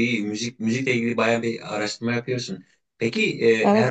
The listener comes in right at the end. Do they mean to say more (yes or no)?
no